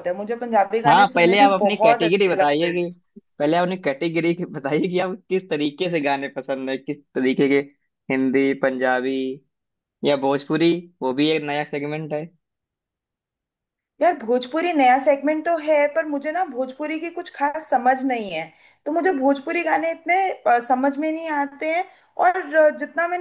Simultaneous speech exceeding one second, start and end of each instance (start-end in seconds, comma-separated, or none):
0.9-2.8